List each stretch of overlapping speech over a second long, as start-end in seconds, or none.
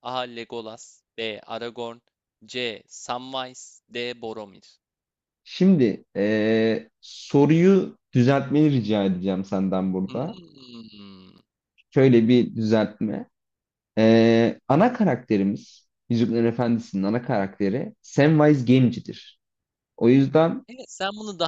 none